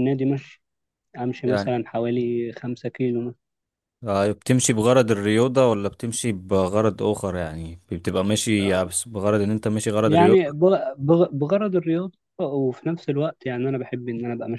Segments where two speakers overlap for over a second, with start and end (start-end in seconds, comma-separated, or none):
none